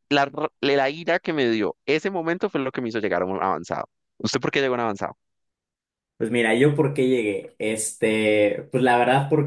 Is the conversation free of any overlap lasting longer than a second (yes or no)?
yes